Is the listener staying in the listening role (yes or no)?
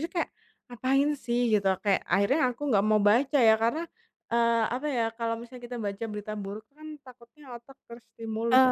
no